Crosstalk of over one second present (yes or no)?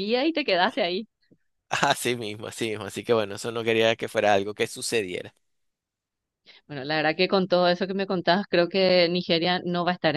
no